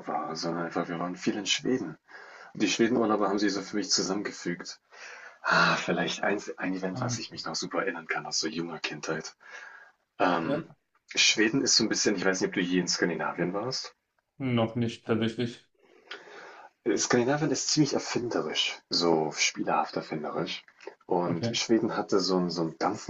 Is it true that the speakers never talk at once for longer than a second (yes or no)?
yes